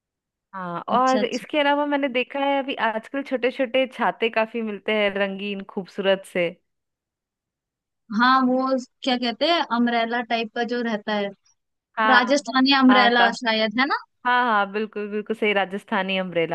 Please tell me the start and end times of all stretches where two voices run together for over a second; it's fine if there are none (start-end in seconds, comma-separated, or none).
none